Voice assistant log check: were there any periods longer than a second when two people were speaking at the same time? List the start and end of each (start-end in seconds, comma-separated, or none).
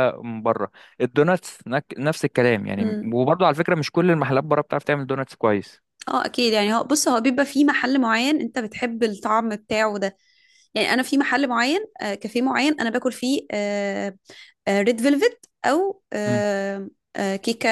none